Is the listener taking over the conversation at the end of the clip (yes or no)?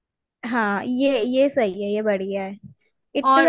no